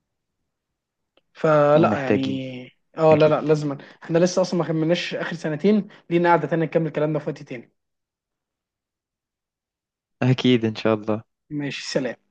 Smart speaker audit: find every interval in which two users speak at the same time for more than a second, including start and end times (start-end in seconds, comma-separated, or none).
none